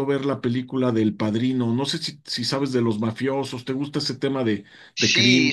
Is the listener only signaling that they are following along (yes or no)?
no